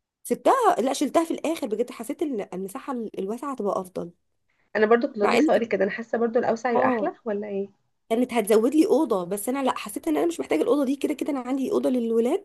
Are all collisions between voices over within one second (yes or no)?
yes